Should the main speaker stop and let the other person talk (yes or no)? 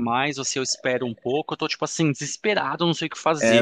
yes